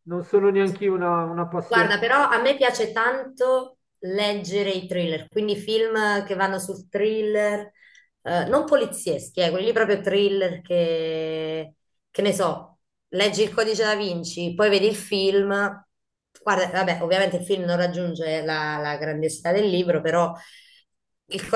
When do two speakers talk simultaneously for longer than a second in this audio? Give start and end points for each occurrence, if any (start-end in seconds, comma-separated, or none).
none